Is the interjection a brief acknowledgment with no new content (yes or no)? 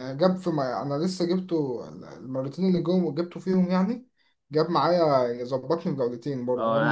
no